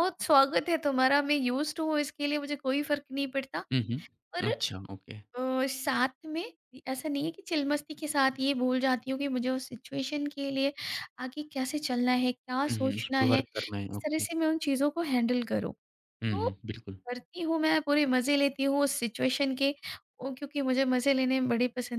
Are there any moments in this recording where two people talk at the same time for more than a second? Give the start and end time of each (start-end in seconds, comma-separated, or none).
12.7-14.3